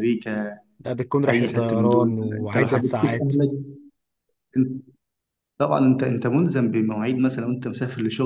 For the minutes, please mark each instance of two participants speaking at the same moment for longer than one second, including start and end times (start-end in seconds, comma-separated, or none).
1.3-3.3